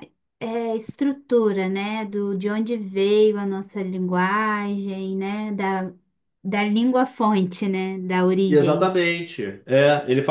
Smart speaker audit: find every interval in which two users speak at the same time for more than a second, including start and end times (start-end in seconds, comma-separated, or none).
none